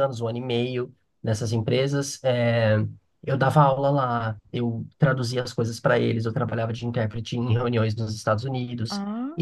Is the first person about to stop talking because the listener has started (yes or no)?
no